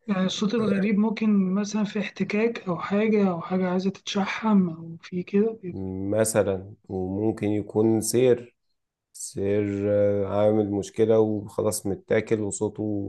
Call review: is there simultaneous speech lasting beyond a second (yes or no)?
no